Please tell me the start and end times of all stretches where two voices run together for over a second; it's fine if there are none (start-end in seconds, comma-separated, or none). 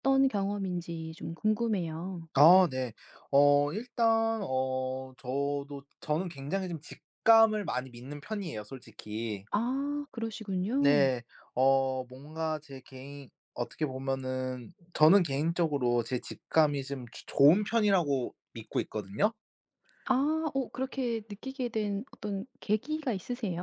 none